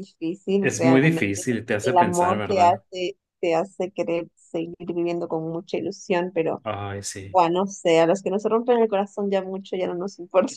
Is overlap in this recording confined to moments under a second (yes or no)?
no